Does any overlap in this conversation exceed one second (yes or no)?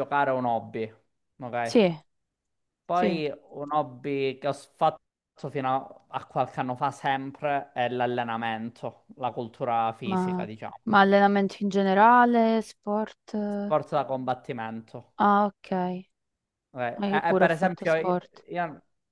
yes